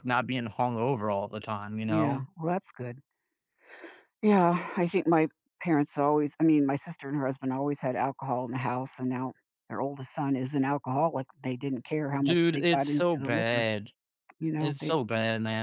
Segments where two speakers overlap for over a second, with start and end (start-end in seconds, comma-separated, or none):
12.2-13.7